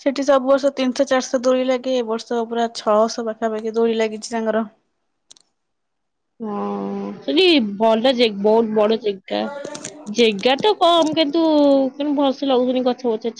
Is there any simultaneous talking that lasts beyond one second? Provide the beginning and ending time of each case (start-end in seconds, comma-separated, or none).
none